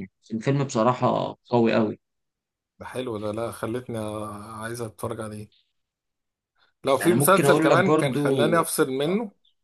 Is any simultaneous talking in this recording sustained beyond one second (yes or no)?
yes